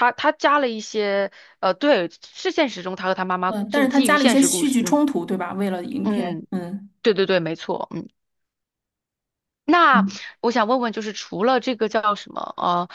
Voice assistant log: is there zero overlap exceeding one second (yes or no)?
no